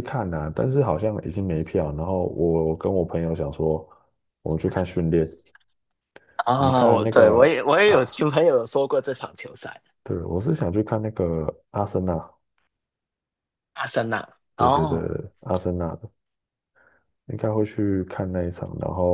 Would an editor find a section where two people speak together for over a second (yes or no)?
yes